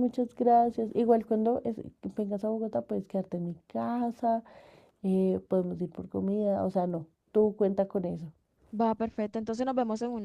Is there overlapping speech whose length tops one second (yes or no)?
no